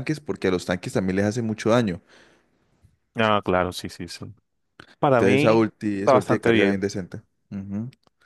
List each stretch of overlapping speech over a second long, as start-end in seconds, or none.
5.1-6.8